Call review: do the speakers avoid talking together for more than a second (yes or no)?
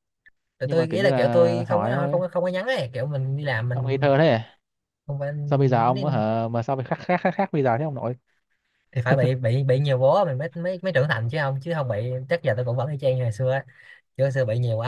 no